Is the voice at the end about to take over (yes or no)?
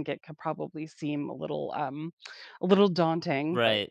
yes